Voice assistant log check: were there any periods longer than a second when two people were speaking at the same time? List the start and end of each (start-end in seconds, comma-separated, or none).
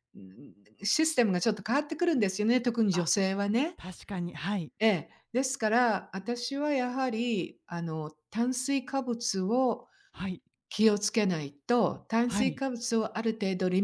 none